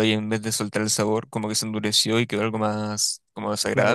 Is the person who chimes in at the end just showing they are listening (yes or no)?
no